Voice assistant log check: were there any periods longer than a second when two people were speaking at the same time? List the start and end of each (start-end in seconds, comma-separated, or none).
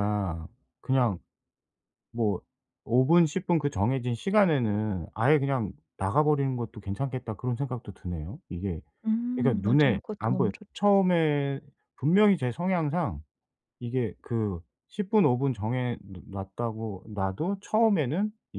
9.3-10.8